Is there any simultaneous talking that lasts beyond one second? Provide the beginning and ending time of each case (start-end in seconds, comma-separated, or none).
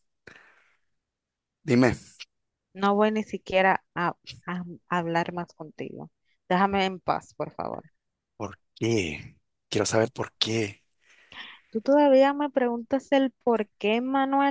none